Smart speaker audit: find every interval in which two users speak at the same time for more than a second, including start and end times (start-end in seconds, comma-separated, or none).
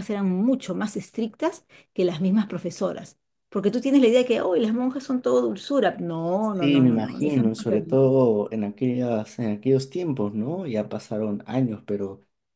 6.4-8.0